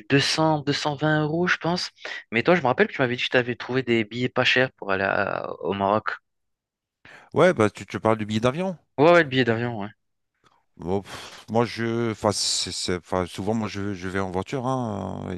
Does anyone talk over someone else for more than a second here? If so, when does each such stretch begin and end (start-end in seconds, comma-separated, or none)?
none